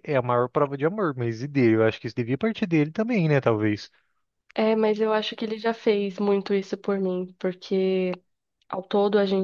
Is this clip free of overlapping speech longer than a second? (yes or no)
yes